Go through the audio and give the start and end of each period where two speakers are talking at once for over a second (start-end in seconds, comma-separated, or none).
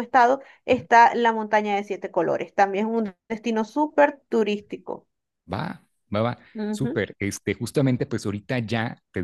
none